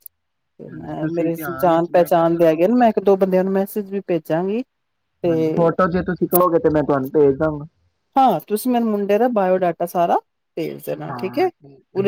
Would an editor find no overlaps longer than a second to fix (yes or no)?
no